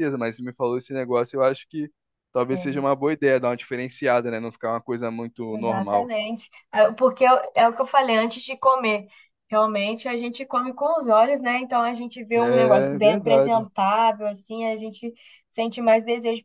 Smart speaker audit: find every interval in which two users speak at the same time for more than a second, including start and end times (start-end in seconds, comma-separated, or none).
12.3-13.7